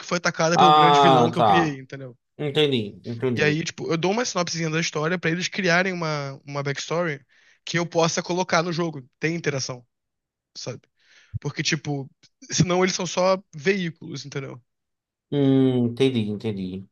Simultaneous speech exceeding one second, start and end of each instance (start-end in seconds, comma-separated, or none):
0.5-1.8